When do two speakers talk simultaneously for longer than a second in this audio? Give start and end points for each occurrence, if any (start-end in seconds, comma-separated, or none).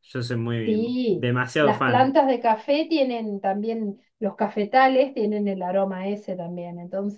0.6-2.1